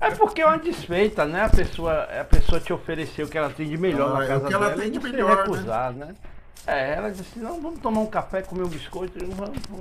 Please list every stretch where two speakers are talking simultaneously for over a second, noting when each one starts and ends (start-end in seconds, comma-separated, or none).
3.9-5.7